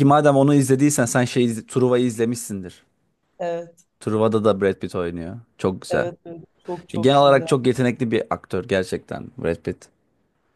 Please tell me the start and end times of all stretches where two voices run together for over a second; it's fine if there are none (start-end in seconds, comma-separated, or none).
none